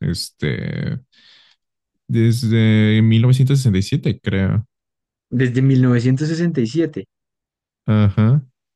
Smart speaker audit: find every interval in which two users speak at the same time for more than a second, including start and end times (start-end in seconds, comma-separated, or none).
none